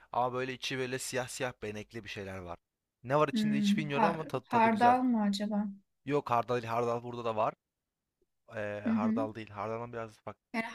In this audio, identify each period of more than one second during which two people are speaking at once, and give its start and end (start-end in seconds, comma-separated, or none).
3.3-5.0